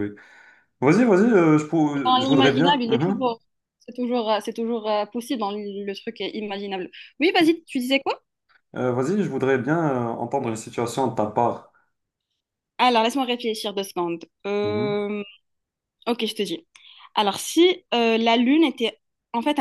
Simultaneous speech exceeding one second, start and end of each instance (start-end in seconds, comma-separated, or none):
1.9-3.2